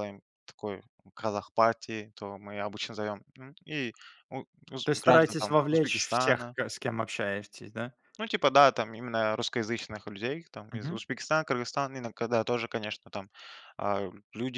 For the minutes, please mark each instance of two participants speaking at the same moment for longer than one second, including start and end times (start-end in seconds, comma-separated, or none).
4.8-6.5